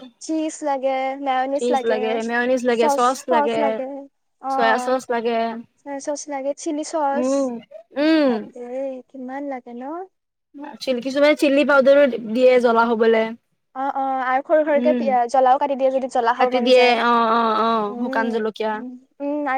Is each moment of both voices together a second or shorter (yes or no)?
no